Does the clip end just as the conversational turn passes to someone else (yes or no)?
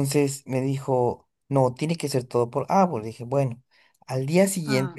no